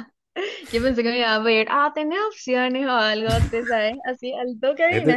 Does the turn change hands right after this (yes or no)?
yes